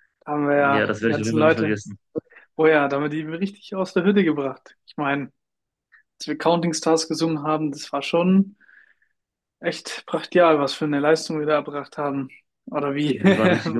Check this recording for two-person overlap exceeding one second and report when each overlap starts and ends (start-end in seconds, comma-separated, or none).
0.6-1.8